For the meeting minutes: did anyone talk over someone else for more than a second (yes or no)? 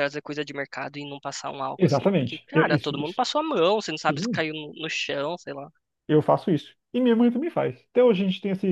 yes